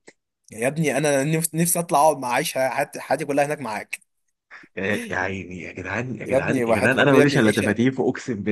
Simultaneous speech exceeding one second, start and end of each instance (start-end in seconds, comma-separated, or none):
6.2-7.8